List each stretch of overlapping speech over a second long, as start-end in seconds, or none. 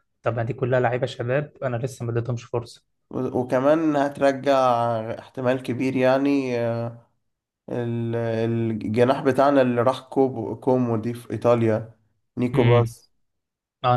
none